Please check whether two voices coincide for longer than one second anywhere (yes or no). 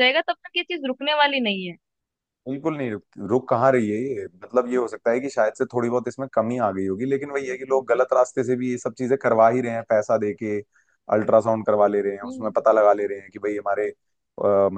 no